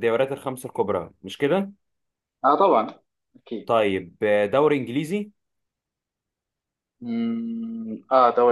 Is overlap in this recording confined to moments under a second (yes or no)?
yes